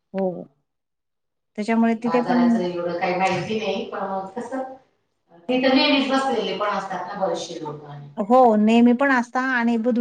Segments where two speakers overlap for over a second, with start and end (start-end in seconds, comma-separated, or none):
none